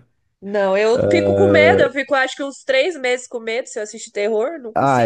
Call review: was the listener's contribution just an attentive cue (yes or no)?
no